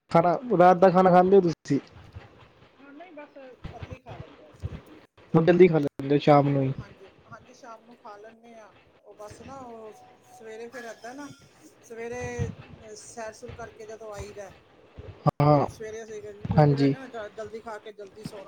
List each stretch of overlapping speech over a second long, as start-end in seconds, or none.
none